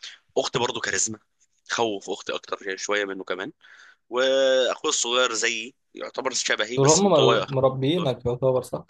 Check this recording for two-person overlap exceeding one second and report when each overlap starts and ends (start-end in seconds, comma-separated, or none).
6.8-8.1